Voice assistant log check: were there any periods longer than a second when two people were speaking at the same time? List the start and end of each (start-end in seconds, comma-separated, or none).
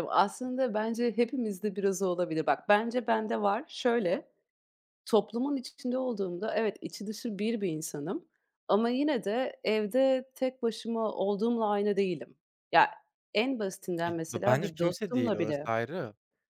14.1-15.7